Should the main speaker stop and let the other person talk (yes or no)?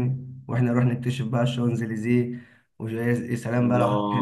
yes